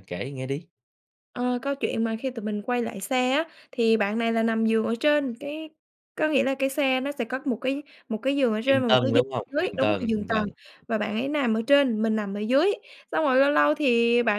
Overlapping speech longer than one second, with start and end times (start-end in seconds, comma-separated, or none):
8.7-10.4